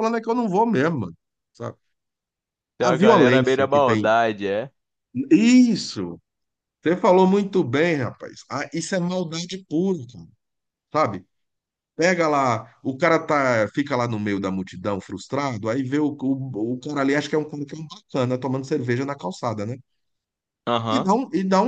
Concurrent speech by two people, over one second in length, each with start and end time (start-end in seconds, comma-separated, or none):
2.8-4.1